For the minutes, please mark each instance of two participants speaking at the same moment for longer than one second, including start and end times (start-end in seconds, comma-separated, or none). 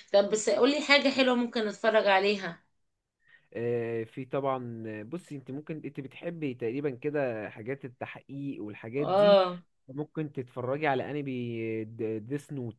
none